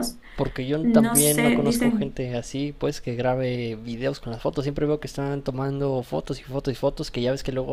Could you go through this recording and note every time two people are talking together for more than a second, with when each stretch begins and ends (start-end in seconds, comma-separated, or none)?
0.8-2.2